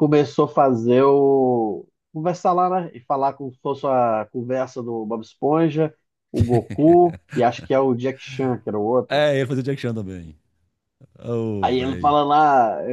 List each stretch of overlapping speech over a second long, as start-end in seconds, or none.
none